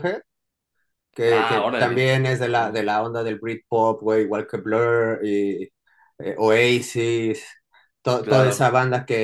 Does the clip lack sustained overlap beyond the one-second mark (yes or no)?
no